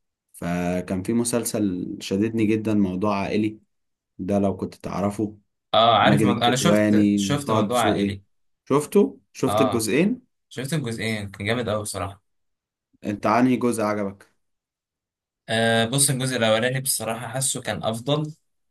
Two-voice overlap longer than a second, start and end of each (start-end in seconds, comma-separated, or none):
6.0-8.2